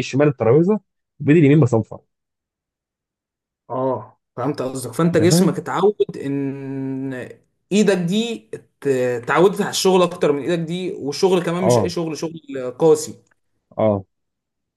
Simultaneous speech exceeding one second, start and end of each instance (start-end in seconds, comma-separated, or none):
none